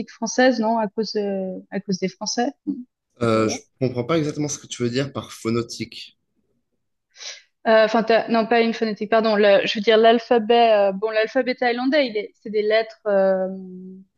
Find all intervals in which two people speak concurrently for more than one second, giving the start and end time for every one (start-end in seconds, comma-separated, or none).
none